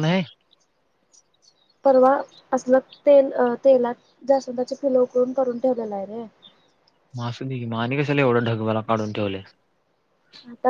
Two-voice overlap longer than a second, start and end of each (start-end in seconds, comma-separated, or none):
none